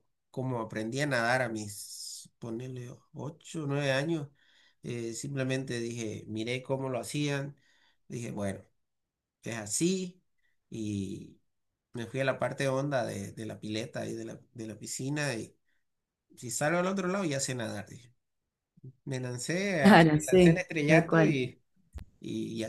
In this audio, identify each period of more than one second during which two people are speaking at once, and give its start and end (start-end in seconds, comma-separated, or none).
19.8-21.5